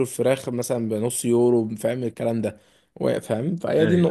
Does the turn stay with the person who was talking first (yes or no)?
yes